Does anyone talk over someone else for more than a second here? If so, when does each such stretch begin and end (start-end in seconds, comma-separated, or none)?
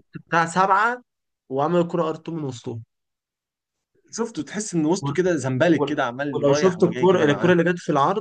5.8-7.5